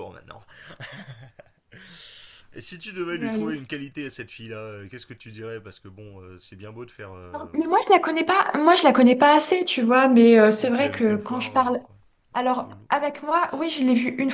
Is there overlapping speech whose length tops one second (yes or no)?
yes